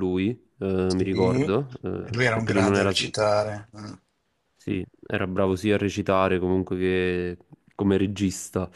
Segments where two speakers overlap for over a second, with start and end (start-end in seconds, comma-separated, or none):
0.8-3.0